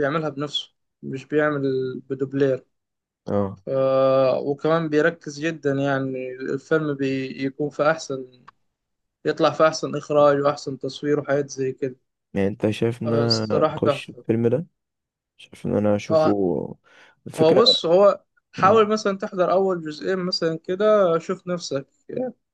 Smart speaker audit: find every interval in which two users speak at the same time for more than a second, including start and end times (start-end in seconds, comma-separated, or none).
13.0-14.2